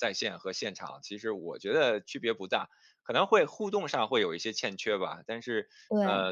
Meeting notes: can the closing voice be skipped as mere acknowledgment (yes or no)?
yes